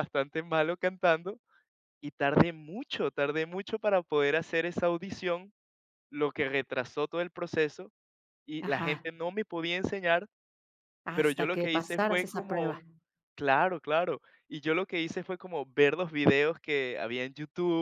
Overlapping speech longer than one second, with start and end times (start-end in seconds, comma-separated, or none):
11.1-12.8